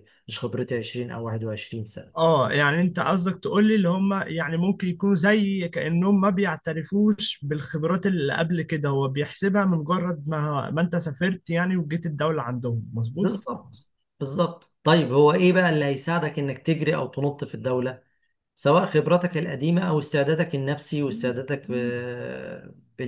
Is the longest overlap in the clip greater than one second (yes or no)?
no